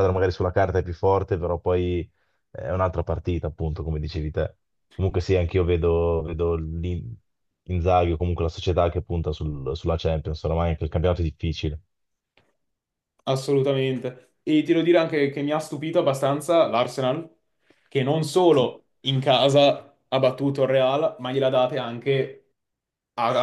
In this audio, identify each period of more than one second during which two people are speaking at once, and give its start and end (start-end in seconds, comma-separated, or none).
none